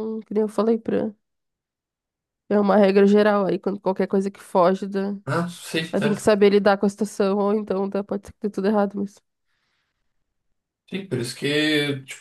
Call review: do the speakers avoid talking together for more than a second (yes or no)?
yes